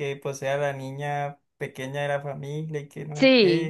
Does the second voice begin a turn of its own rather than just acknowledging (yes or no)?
yes